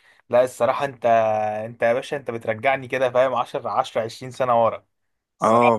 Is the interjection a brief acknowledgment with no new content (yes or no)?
no